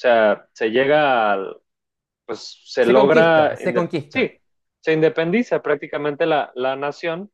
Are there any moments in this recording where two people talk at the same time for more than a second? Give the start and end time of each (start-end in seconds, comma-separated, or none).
2.8-4.3